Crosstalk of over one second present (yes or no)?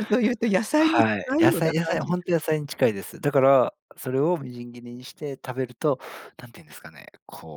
yes